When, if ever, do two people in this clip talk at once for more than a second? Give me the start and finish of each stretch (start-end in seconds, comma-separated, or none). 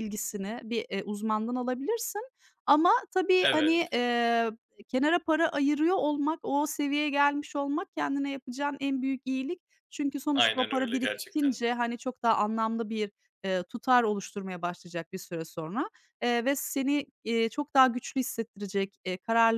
10.3-11.6